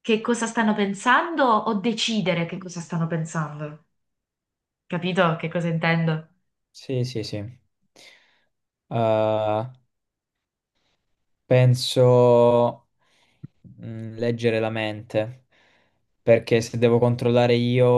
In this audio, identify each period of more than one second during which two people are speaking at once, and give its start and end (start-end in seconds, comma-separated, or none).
none